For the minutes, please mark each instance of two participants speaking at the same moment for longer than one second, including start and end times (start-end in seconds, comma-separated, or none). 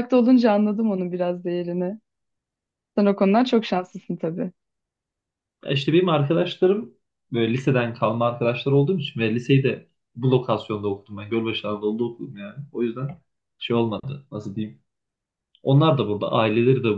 none